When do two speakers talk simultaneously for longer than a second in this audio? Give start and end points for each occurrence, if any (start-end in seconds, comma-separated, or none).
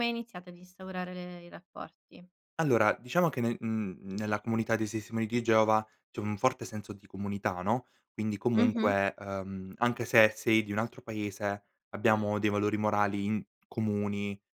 none